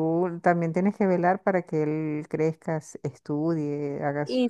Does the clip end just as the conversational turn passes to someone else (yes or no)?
yes